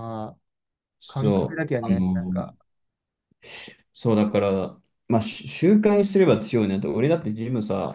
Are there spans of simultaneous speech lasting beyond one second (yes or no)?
yes